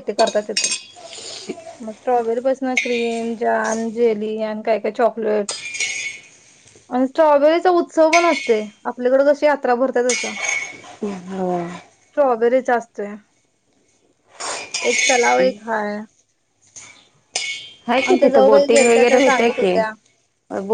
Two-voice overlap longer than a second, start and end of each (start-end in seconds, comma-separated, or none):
18.1-19.9